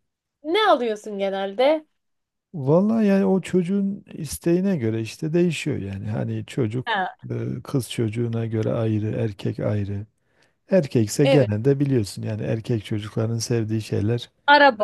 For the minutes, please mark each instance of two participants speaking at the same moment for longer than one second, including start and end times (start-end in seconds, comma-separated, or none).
none